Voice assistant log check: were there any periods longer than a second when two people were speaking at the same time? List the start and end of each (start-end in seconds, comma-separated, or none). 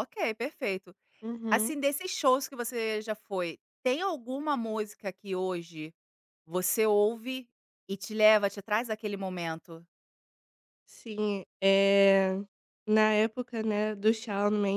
none